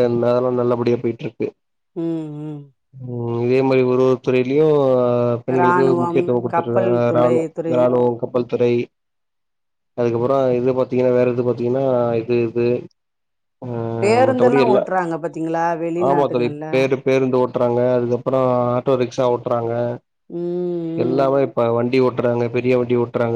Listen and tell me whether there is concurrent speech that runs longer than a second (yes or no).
yes